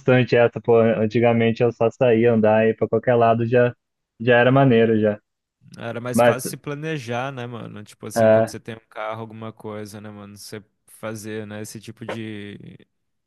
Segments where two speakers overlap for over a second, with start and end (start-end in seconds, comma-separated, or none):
none